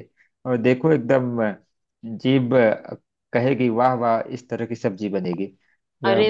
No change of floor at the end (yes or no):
no